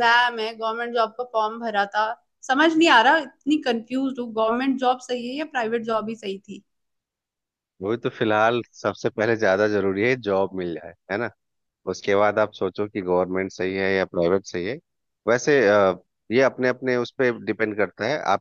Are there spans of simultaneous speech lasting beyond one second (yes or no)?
no